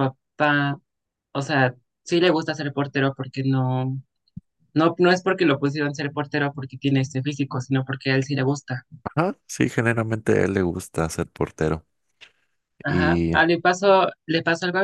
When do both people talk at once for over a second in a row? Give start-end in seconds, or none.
none